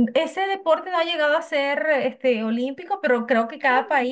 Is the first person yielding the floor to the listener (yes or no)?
no